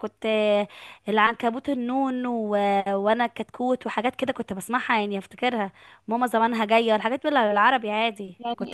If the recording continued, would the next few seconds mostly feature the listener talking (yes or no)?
yes